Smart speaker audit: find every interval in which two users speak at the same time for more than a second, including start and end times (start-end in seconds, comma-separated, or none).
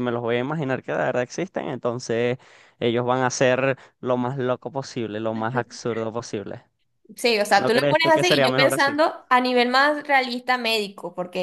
7.5-8.9